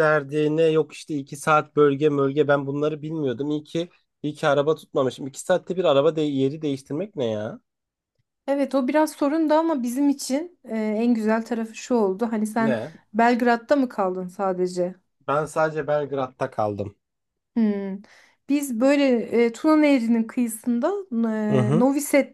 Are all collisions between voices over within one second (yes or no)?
yes